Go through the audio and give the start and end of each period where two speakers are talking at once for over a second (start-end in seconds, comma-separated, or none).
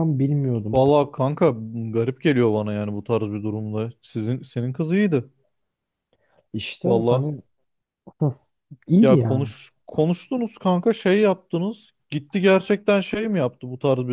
none